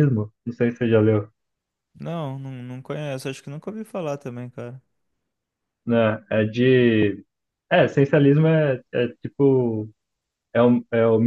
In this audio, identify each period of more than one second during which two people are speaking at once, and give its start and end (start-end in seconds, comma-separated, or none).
none